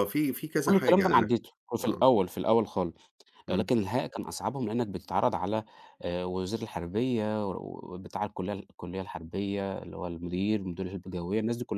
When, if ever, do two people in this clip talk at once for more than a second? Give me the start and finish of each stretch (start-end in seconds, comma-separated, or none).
0.6-2.1